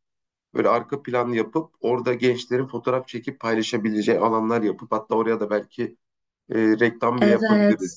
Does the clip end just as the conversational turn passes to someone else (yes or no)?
yes